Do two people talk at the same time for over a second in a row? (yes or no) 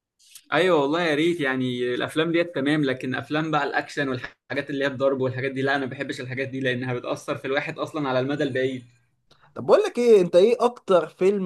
no